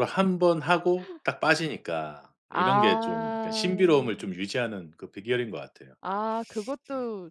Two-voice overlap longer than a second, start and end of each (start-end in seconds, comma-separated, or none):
2.5-3.7